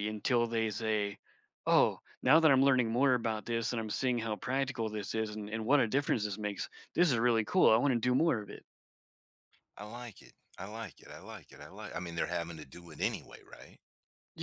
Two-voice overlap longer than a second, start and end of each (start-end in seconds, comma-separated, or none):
none